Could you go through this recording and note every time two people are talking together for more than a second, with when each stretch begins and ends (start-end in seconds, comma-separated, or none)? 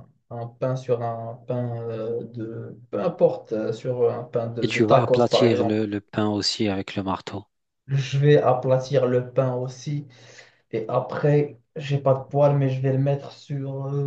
4.6-5.8